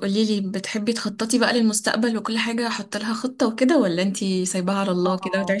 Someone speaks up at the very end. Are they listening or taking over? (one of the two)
taking over